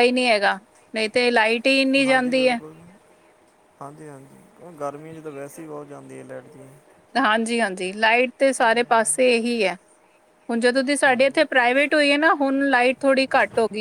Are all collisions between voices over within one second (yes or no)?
yes